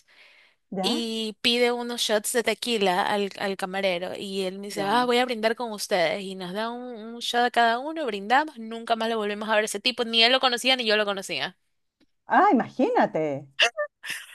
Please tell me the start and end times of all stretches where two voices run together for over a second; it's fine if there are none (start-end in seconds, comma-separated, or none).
none